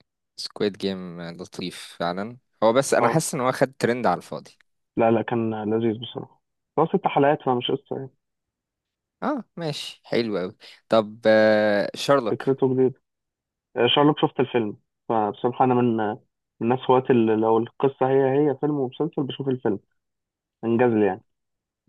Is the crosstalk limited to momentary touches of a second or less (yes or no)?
yes